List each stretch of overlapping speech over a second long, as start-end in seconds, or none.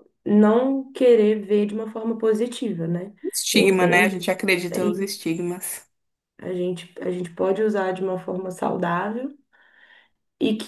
none